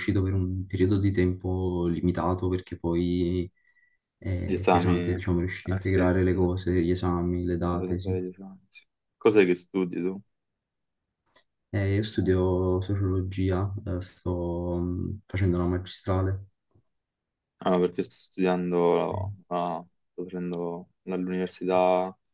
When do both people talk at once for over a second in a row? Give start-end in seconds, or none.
4.4-6.5